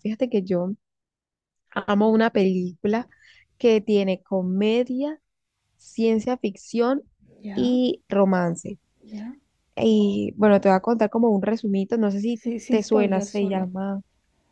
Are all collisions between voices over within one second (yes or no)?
no